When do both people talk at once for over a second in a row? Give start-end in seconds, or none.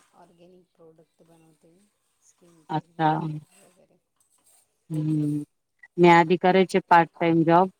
none